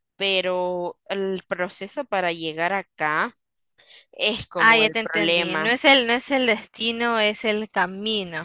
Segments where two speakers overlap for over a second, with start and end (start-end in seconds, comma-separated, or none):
4.6-5.8